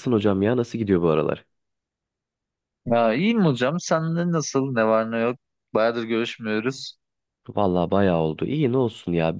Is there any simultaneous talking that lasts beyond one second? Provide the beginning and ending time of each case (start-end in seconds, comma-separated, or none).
none